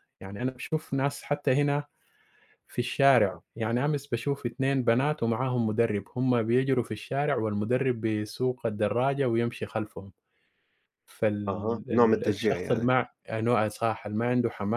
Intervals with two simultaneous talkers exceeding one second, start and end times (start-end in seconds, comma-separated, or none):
11.5-12.9